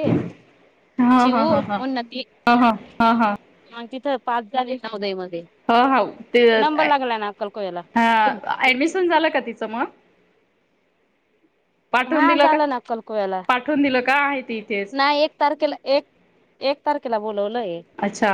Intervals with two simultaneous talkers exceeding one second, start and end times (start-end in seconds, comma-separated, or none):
none